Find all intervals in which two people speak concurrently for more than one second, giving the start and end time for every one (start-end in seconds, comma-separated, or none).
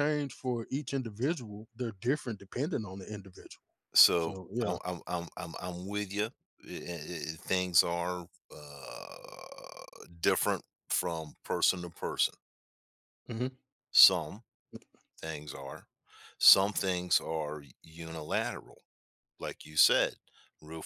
none